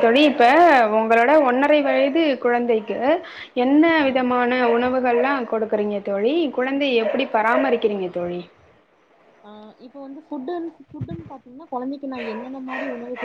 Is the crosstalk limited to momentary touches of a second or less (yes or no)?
yes